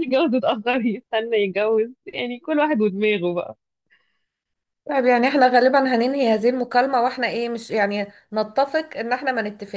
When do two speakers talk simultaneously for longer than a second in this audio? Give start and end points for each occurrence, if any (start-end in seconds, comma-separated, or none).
none